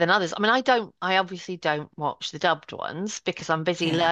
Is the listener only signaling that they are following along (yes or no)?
yes